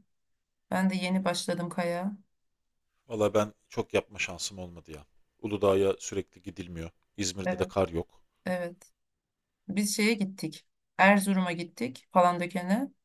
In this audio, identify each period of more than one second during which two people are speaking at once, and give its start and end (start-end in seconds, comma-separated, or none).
none